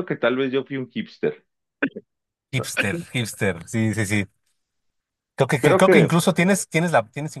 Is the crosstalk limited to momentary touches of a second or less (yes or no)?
yes